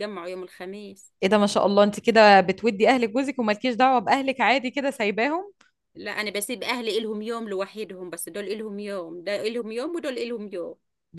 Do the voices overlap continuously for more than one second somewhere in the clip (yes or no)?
no